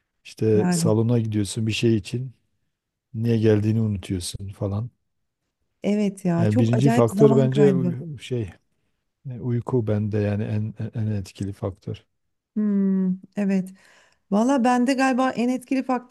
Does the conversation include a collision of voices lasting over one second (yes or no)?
yes